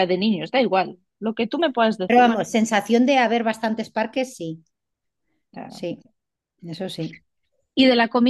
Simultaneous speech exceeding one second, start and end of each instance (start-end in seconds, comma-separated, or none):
none